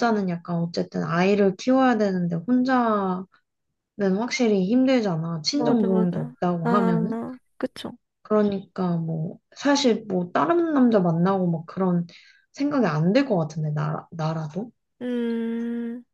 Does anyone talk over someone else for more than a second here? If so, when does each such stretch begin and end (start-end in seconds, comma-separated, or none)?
5.5-7.2